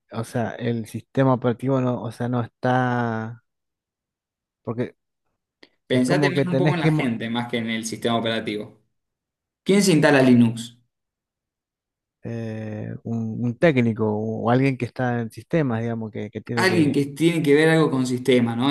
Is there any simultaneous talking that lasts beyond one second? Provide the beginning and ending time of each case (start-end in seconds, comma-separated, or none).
5.9-7.1